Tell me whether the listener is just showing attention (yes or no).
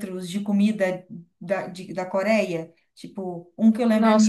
no